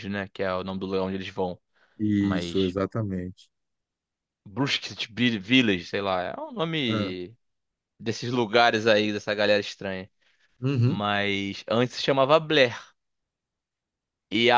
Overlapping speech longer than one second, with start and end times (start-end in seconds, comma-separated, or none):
none